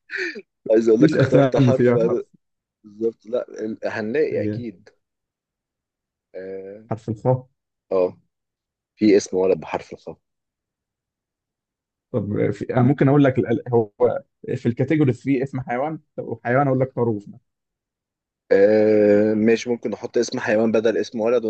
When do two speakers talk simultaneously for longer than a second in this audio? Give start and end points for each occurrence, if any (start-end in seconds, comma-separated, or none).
1.0-2.2